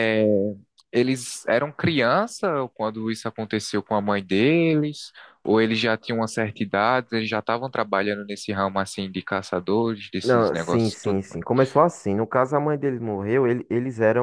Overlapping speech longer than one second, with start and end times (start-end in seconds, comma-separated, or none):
10.2-11.4